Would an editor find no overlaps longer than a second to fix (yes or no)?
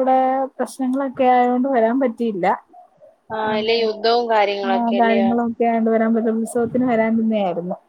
no